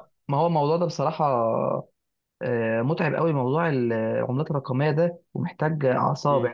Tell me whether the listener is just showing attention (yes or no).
yes